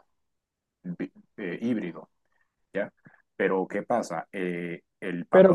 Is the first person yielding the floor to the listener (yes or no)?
yes